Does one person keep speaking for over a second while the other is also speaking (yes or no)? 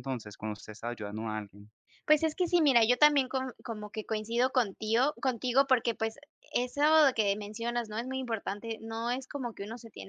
no